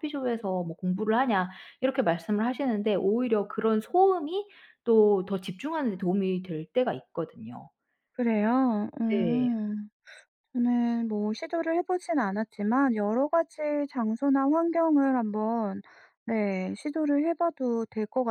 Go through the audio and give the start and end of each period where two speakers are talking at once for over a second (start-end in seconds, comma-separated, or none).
none